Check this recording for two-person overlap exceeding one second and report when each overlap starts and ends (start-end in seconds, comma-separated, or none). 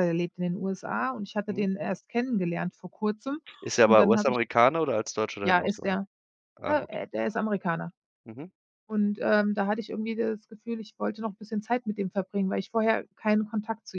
none